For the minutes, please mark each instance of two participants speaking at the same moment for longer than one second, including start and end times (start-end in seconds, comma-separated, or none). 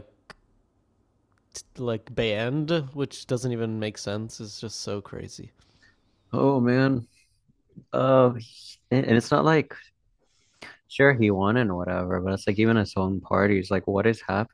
none